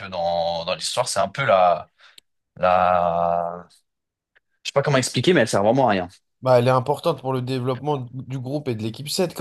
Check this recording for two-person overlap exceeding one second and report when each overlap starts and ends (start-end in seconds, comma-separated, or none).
none